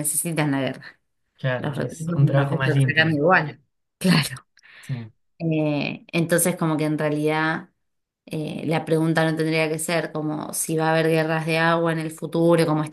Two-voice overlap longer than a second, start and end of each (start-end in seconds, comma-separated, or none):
1.6-3.2